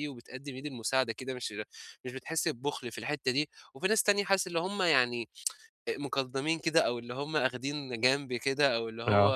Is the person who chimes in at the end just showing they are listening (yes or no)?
yes